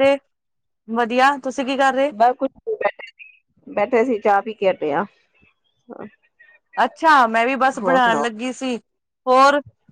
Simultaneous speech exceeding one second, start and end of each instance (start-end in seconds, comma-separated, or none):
none